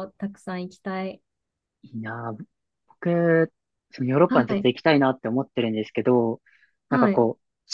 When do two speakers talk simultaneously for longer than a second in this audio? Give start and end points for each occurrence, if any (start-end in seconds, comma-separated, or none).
none